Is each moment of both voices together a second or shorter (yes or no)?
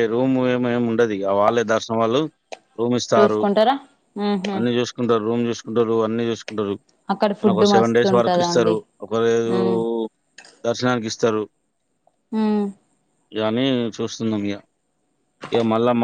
no